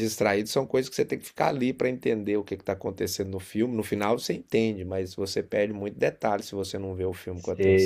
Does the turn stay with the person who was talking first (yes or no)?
no